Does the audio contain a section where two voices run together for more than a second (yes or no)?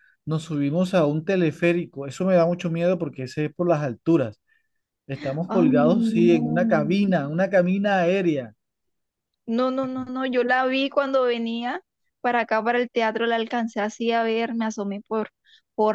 yes